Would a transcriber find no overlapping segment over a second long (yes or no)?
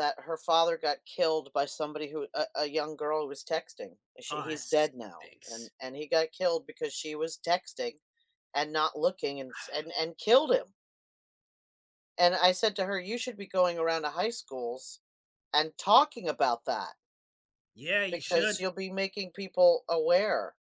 no